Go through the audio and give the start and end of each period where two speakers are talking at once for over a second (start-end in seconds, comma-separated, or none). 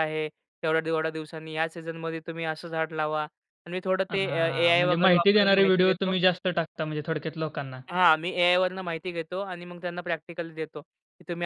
4.1-6.1